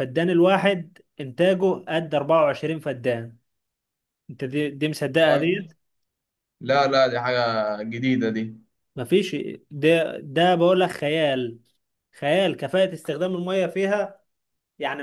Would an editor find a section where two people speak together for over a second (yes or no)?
no